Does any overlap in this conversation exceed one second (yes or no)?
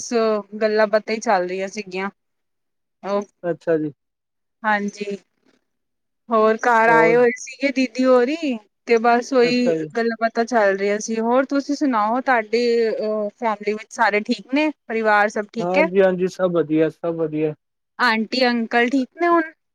no